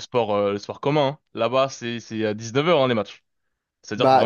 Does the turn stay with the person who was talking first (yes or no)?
no